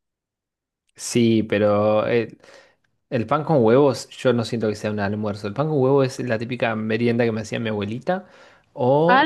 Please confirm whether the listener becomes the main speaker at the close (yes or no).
yes